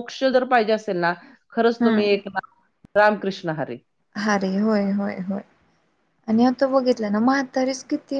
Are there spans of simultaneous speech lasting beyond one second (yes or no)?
no